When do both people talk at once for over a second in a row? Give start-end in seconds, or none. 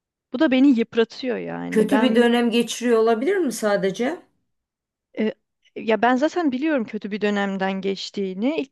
none